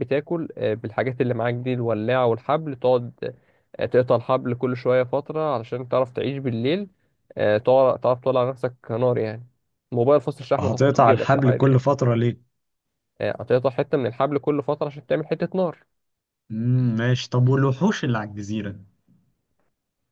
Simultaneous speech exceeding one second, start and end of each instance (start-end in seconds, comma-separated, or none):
10.6-11.8